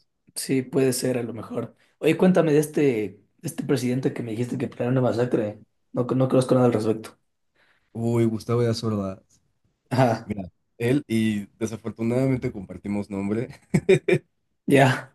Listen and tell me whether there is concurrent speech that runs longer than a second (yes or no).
no